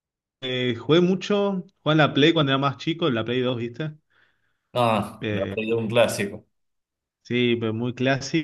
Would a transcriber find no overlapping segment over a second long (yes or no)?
yes